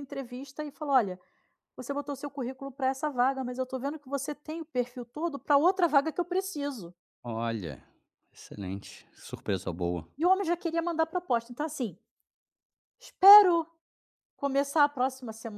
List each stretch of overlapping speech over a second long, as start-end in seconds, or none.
none